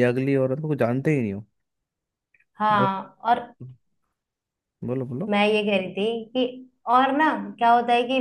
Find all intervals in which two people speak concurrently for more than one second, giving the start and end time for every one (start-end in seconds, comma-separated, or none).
none